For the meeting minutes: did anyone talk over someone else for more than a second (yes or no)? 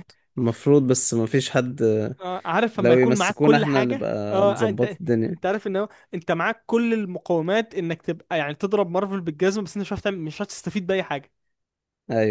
yes